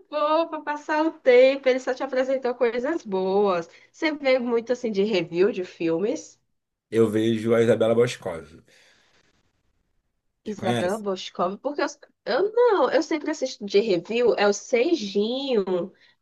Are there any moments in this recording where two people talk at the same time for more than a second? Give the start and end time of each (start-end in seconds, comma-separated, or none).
none